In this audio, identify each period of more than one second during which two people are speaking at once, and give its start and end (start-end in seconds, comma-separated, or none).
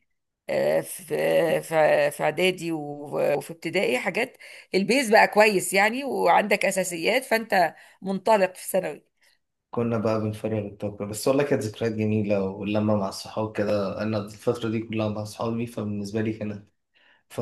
none